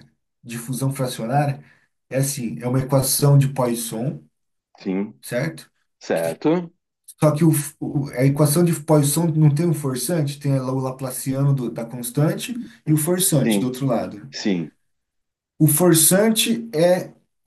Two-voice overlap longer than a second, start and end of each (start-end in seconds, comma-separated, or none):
none